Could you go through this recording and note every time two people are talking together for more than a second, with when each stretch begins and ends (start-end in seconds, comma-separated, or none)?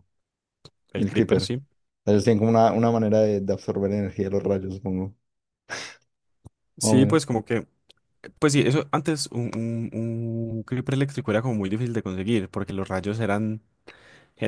none